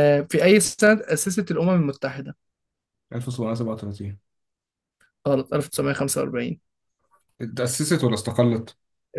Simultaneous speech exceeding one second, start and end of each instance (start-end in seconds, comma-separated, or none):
none